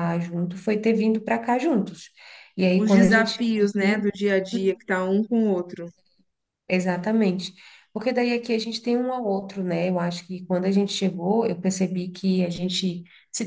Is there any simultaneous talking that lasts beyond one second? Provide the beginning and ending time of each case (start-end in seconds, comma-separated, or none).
2.7-4.1